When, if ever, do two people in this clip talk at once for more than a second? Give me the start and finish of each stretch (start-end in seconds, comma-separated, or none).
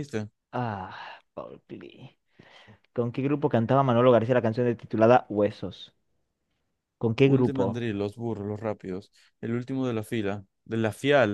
none